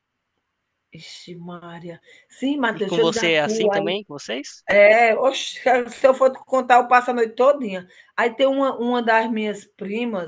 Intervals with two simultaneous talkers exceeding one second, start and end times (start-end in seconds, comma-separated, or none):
2.7-4.0